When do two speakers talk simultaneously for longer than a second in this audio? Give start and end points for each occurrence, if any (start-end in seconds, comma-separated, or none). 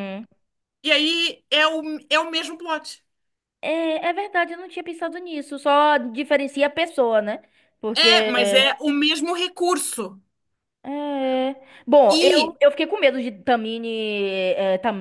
none